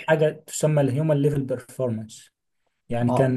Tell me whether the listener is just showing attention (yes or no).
yes